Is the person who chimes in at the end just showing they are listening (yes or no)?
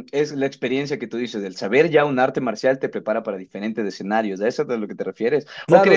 yes